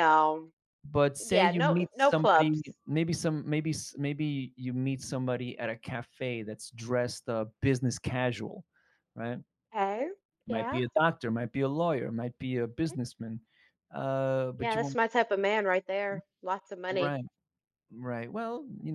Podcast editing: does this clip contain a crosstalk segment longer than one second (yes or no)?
yes